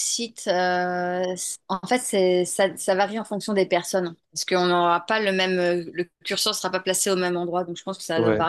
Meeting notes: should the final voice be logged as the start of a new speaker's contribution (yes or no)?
no